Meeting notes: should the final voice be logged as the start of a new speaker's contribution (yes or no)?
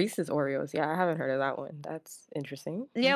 yes